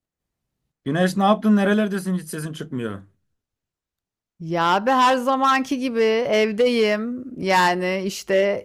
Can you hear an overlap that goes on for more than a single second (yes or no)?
no